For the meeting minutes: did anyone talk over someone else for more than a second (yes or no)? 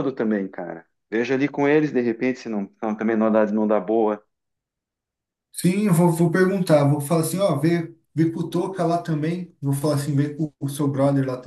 no